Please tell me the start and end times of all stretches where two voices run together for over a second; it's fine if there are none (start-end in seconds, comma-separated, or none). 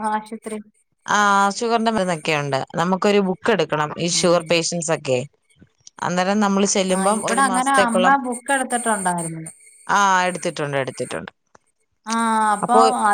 none